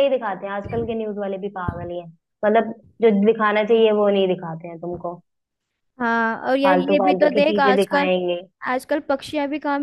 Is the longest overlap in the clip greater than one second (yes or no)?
yes